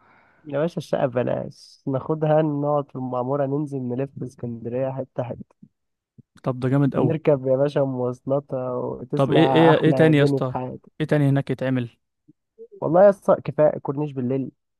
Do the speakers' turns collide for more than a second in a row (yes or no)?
yes